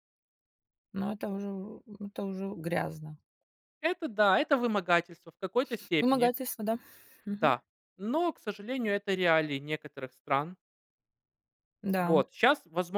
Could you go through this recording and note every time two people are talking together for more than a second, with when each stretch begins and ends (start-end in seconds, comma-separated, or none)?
none